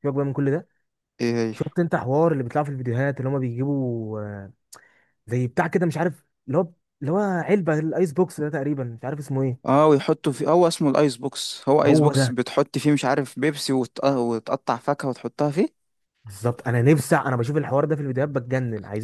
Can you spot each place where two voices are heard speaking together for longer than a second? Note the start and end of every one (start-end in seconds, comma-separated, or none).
none